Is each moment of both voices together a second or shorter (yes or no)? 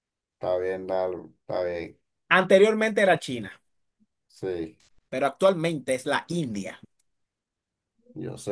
yes